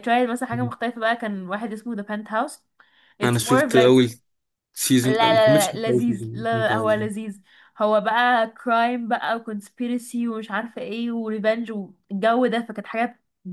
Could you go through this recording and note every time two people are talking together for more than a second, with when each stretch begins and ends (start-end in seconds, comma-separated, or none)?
5.0-7.1